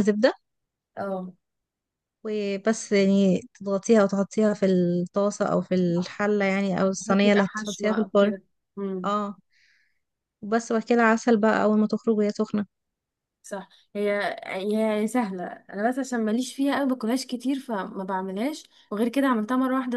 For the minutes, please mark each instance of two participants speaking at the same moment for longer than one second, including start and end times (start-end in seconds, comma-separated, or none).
6.8-8.3